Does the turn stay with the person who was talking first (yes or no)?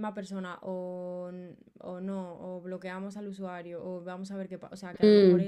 yes